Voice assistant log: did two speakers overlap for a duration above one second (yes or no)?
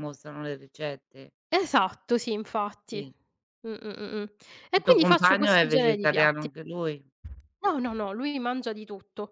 yes